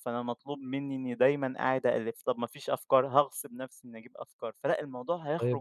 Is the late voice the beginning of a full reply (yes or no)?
yes